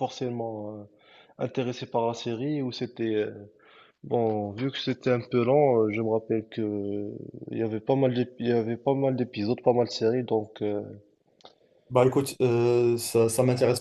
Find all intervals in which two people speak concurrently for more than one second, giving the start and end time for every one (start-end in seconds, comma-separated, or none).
none